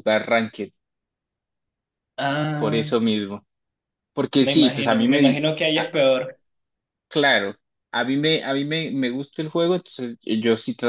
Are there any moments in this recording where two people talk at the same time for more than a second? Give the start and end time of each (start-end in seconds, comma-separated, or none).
4.4-5.9